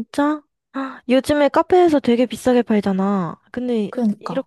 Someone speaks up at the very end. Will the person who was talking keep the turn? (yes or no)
yes